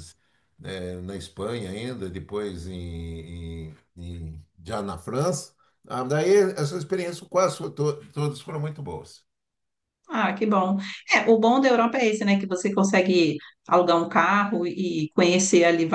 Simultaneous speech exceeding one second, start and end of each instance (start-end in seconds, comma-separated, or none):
none